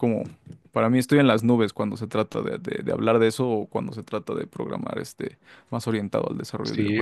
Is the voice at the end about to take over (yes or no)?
yes